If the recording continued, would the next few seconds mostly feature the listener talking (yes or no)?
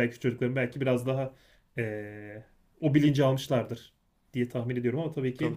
yes